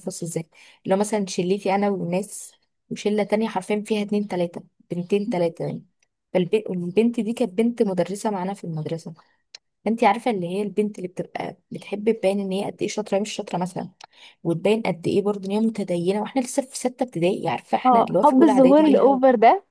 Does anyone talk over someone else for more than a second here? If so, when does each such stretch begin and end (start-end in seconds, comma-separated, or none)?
17.9-19.2